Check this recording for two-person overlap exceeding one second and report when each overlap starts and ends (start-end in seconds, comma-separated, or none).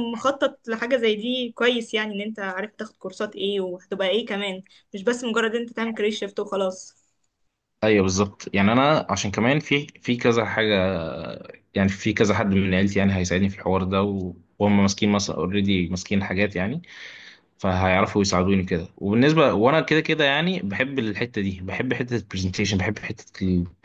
none